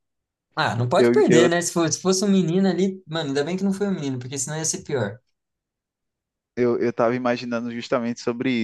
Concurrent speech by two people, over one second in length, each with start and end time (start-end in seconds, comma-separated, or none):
none